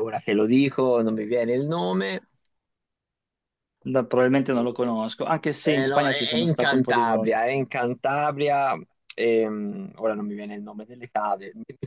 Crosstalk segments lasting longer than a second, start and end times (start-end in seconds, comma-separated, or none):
5.6-7.4